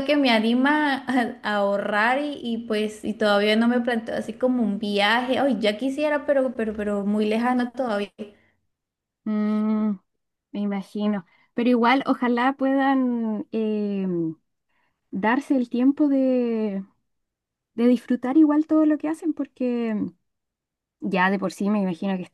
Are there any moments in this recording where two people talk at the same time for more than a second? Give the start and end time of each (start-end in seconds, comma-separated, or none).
none